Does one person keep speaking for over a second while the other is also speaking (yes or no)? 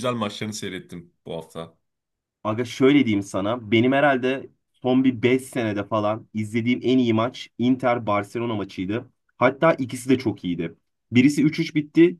no